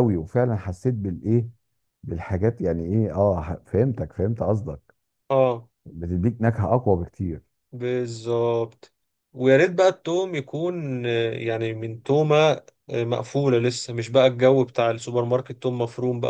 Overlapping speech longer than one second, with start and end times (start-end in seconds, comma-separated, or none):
none